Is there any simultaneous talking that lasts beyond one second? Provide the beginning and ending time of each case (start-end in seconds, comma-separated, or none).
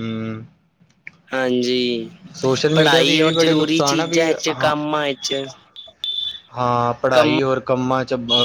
2.7-4.7